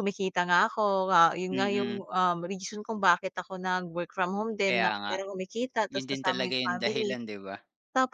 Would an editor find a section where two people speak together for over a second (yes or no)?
yes